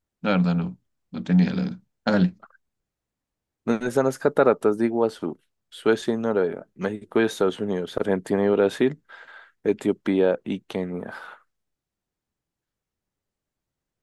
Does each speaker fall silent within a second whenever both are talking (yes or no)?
yes